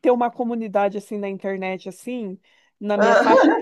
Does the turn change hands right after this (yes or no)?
no